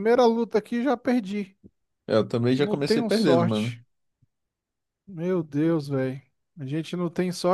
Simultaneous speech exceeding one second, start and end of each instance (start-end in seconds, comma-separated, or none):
2.5-3.8